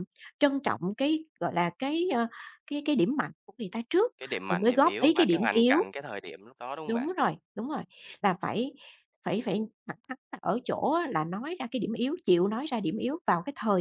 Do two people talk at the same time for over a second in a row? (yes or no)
yes